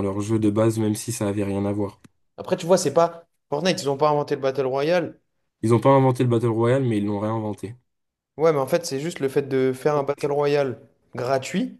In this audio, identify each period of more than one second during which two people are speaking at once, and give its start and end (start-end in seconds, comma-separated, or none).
none